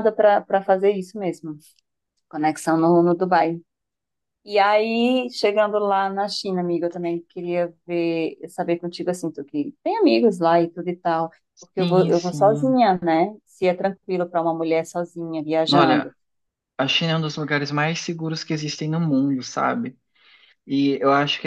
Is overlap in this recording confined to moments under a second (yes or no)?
no